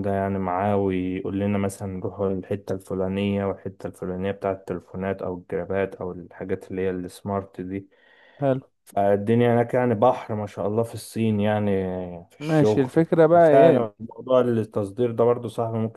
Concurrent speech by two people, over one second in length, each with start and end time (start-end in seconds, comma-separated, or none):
12.4-13.9